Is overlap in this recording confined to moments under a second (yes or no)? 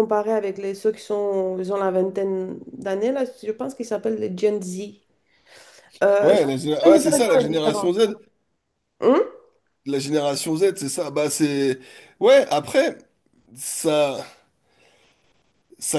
no